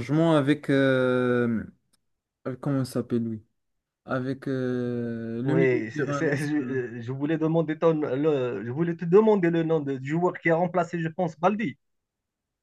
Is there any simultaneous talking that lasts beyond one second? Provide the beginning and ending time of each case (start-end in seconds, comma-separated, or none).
5.4-6.8